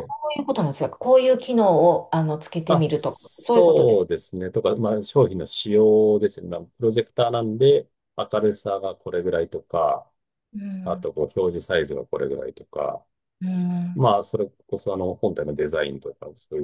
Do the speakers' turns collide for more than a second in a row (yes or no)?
yes